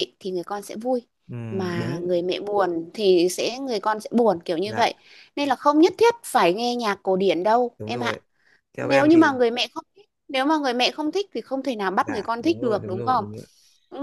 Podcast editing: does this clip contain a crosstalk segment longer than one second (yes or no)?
yes